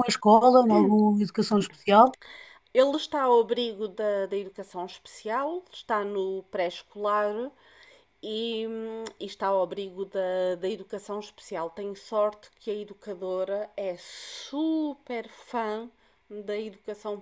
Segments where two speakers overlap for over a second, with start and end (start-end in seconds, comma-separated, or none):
none